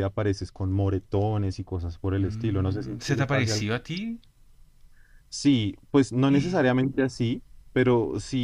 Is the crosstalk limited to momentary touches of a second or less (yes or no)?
no